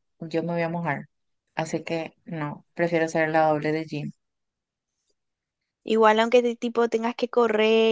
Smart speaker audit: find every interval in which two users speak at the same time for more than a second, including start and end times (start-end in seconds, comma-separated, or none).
none